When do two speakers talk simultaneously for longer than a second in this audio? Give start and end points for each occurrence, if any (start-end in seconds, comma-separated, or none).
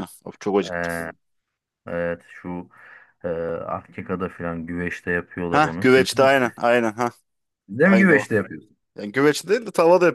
none